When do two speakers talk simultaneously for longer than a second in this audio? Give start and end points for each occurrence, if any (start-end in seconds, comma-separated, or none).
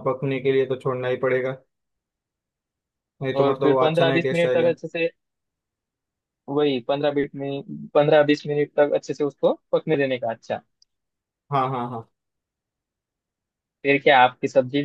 3.4-4.7